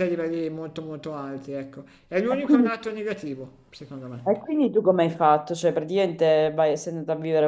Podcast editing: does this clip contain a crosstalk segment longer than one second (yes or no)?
no